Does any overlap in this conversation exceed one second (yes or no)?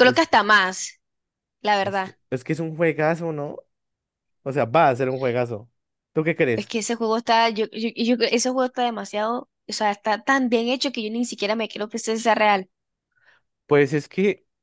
no